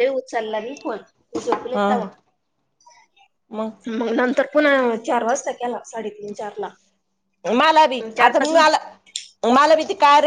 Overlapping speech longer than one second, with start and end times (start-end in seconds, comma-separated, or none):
none